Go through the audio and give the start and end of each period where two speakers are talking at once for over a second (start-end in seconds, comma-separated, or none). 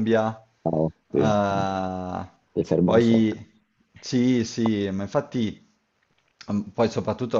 none